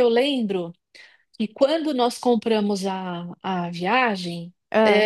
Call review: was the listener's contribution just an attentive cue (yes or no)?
yes